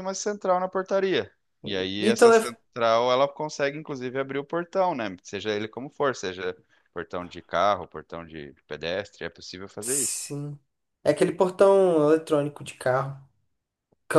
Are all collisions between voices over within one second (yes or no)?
yes